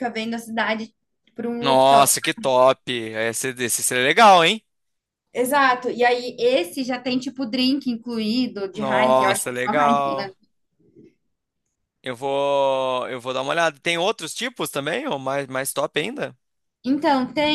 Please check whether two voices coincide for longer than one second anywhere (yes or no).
yes